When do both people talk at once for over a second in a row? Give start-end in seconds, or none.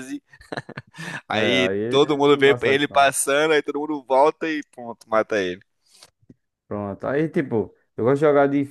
1.3-3.1